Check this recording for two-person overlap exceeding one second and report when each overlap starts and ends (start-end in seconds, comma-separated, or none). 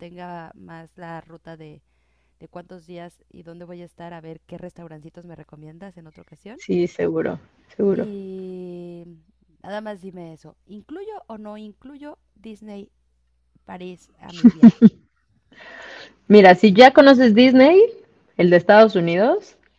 none